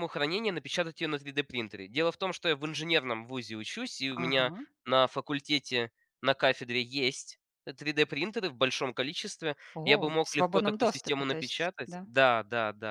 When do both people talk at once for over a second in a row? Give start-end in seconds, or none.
9.8-12.1